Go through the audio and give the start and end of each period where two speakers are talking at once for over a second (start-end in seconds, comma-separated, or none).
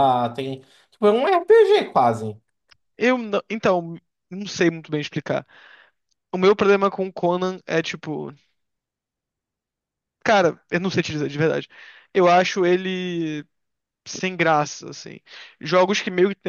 none